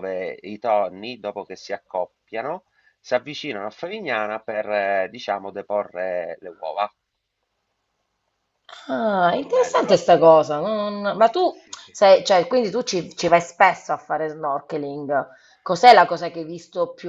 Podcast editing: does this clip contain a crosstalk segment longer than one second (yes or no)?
no